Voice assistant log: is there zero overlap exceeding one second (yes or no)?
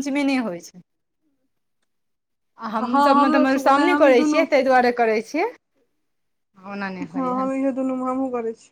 no